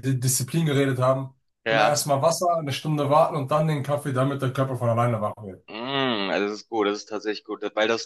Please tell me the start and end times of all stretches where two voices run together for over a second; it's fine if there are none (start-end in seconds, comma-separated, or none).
none